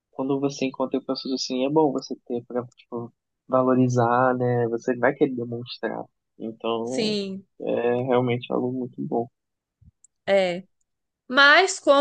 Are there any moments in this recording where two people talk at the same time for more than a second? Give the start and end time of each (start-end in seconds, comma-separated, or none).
none